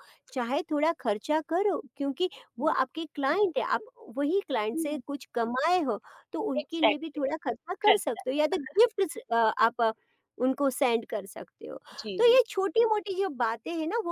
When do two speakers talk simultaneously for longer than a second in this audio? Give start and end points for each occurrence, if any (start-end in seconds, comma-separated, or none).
none